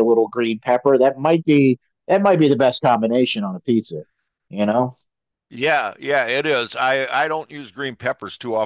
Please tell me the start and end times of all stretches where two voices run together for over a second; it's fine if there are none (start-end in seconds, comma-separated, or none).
none